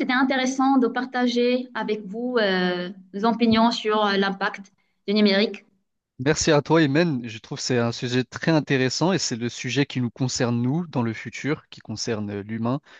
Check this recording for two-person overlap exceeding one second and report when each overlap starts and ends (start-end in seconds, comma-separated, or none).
none